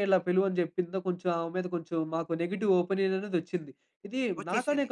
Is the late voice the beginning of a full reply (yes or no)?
no